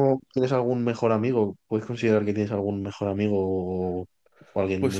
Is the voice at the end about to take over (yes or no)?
yes